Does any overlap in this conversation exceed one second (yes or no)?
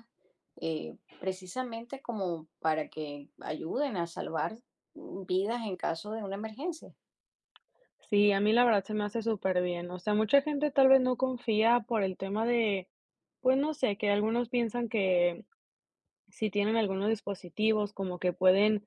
no